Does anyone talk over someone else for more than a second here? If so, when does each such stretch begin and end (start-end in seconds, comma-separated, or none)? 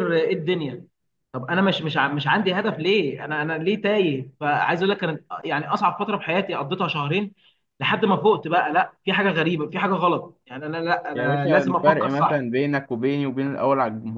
11.1-12.4